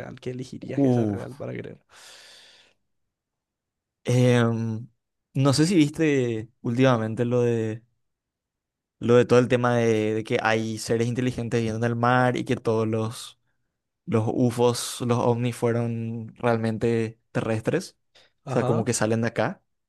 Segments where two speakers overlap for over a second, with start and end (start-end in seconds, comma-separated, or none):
none